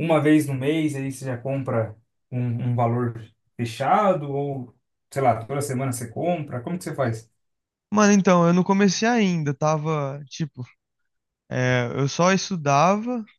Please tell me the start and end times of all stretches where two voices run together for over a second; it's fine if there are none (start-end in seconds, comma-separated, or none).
none